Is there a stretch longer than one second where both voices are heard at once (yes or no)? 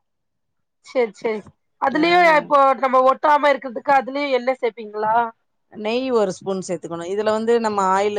no